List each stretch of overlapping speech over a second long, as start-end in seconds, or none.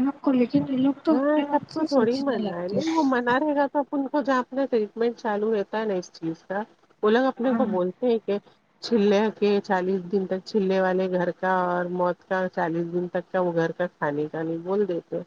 1.1-2.8